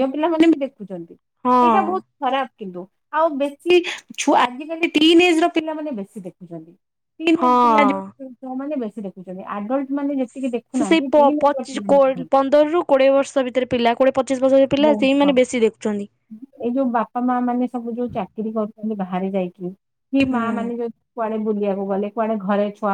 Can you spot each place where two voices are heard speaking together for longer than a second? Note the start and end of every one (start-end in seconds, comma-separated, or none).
10.8-12.4